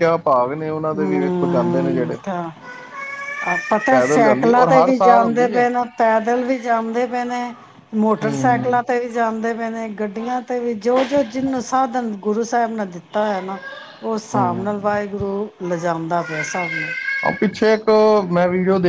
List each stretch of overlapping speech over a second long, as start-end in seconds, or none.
1.0-2.2